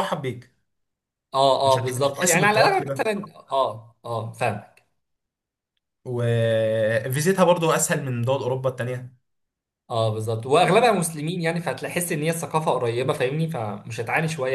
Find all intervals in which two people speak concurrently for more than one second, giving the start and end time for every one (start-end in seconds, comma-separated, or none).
1.6-3.1